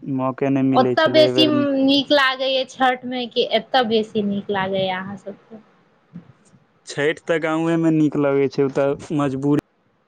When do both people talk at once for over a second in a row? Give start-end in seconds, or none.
none